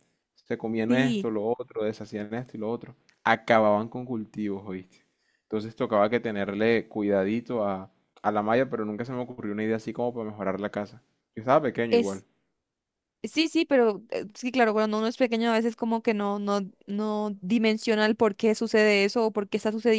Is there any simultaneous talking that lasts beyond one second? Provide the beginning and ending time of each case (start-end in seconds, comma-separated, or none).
none